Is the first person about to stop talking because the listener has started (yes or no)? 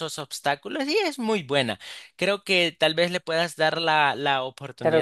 yes